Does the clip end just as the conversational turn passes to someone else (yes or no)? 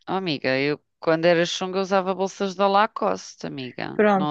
yes